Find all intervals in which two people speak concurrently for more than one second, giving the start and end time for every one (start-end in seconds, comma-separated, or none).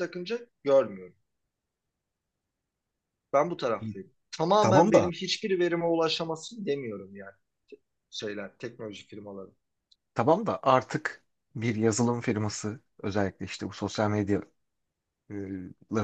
none